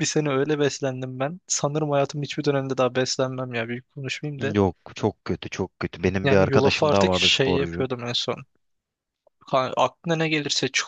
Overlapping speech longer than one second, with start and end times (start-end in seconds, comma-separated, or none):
6.2-7.9